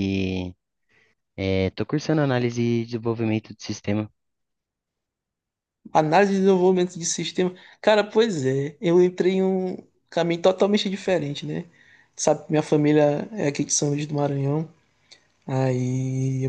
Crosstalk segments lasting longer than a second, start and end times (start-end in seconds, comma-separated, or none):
none